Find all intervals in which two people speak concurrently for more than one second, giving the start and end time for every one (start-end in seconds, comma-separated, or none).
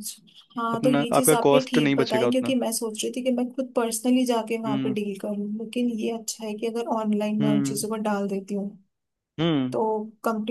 0.7-2.5